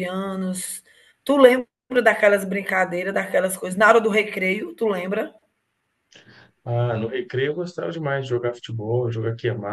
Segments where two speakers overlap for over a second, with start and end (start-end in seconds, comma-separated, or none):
none